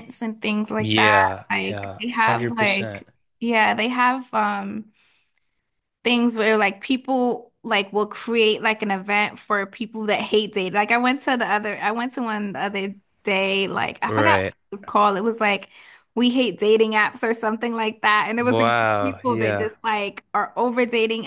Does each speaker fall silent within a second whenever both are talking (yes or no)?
no